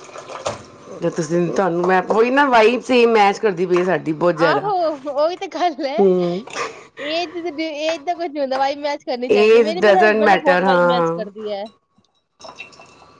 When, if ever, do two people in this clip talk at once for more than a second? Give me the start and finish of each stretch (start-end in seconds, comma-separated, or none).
9.3-11.4